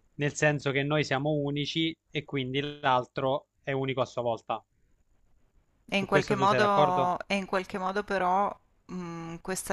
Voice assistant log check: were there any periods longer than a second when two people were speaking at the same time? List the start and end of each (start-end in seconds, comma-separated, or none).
5.9-7.1